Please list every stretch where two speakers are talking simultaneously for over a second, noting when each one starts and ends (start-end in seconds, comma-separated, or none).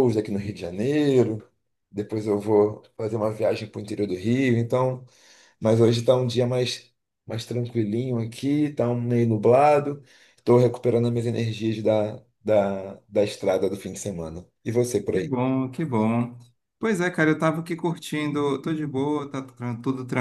none